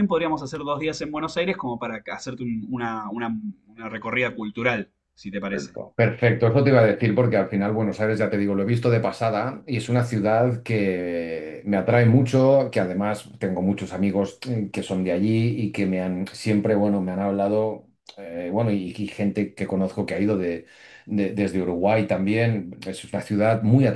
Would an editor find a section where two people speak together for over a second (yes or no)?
no